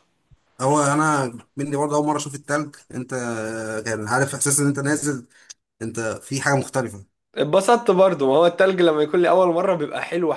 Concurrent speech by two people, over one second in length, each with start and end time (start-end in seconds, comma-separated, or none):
none